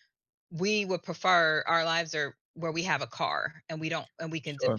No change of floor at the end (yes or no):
no